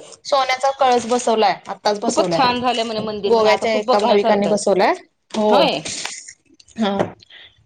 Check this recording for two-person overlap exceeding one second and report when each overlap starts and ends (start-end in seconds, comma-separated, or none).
3.3-4.6